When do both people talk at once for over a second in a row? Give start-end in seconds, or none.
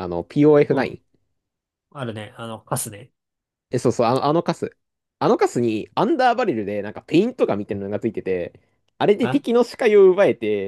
none